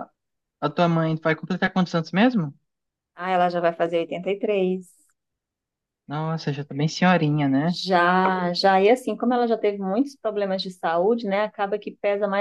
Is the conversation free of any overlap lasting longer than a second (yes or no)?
yes